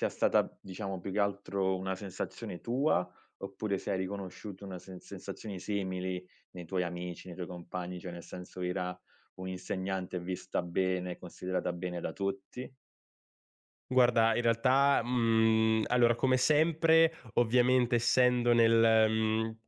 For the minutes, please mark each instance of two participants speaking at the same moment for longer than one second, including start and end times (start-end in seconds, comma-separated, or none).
none